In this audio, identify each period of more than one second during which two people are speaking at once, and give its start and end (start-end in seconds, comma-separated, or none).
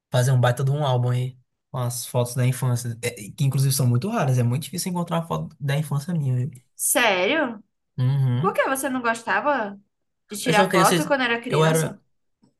10.4-12.0